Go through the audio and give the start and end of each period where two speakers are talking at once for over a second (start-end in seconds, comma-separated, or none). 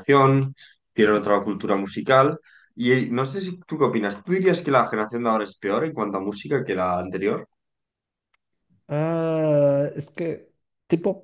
none